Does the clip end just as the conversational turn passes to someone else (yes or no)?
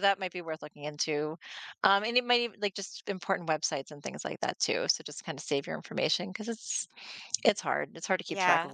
yes